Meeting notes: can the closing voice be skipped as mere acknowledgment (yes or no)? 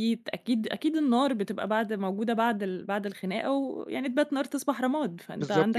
no